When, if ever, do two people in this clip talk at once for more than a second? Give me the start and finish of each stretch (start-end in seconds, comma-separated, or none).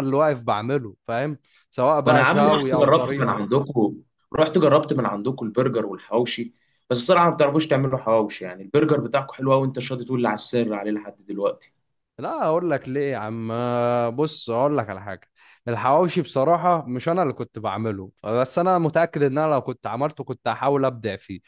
2.0-3.5